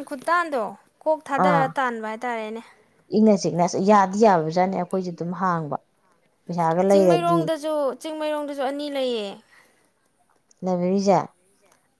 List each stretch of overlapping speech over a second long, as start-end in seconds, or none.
none